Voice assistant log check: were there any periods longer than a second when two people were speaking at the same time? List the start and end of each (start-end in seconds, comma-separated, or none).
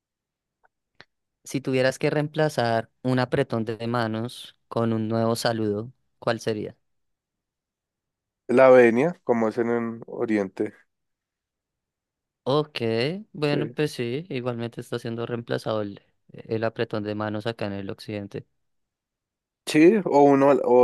none